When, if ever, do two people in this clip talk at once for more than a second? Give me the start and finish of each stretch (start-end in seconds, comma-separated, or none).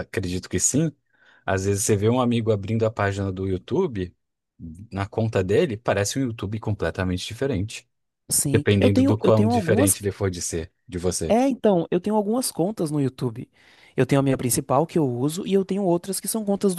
8.5-9.9